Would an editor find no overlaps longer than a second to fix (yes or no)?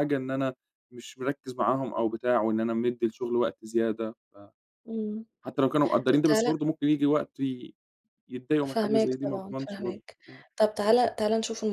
no